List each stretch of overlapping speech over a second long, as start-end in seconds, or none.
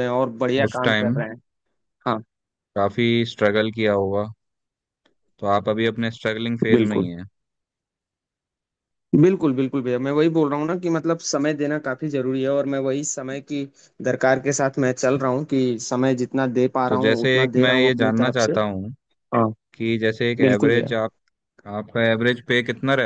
16.9-18.5